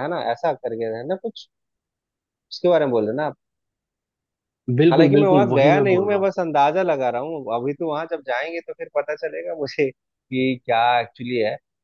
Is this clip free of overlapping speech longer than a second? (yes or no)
no